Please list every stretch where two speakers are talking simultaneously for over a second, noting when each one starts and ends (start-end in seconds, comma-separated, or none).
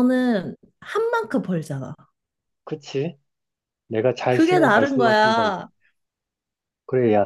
4.3-5.6